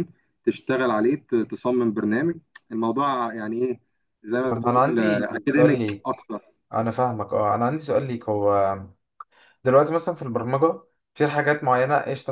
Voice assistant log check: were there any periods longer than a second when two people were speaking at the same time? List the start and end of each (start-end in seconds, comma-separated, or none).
4.5-6.3